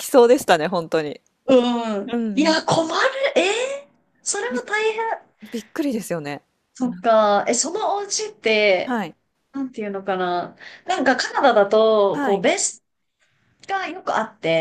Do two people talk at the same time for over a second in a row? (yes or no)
no